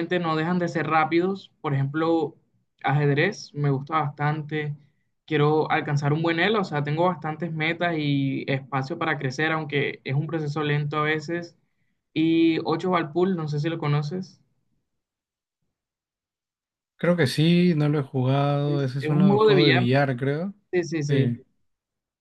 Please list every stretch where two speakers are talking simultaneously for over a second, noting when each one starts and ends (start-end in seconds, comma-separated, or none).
18.6-19.9